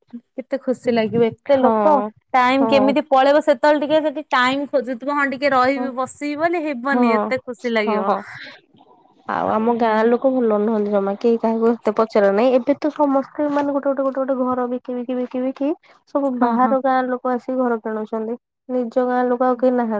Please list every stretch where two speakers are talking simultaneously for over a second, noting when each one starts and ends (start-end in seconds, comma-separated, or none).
none